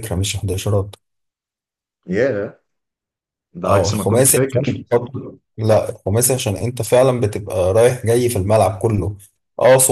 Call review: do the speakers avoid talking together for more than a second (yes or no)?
no